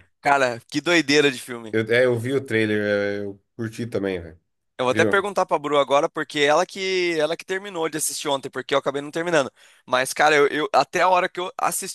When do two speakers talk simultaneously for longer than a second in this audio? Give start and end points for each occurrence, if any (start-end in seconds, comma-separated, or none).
none